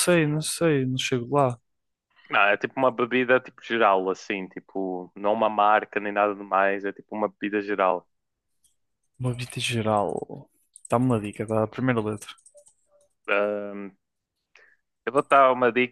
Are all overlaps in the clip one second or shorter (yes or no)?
yes